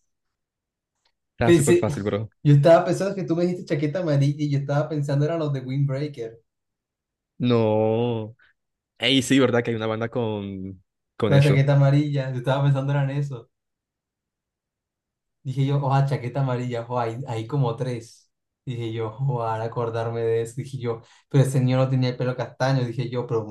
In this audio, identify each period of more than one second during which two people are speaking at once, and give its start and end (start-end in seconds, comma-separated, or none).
none